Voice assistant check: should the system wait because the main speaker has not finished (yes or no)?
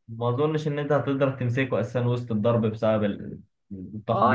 no